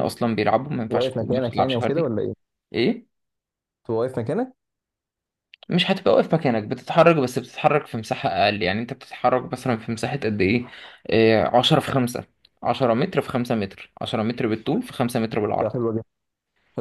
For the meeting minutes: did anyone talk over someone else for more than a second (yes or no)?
yes